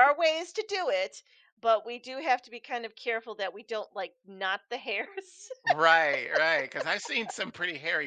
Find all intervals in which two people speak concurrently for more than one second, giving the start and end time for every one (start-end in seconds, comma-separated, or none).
none